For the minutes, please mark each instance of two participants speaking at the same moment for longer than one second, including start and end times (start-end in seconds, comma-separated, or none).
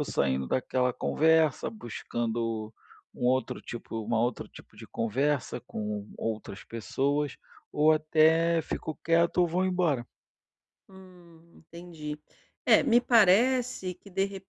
none